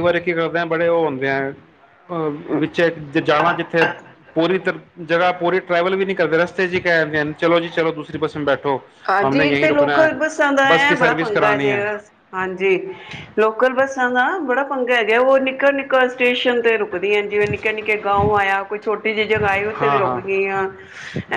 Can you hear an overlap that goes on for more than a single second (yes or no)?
no